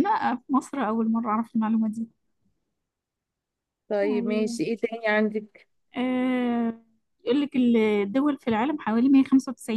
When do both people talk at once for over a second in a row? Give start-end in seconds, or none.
none